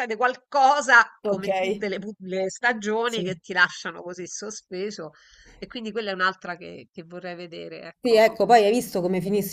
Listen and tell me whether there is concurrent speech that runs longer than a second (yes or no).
no